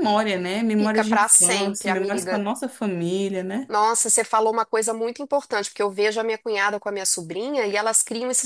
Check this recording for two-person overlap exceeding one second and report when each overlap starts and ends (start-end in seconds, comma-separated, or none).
0.8-2.4